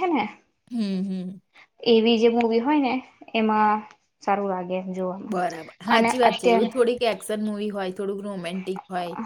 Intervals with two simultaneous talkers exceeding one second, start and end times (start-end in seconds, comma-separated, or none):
none